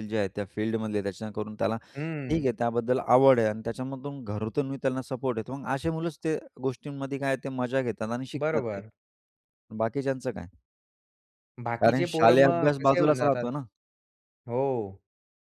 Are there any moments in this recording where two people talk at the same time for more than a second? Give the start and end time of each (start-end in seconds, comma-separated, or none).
11.8-13.4